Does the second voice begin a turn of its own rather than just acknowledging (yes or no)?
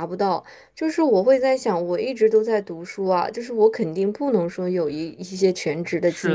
yes